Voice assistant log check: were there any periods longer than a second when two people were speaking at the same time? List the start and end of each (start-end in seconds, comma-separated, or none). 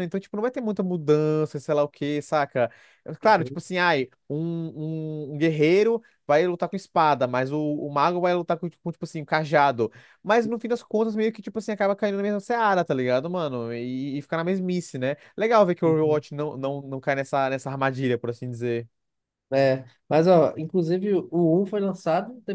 none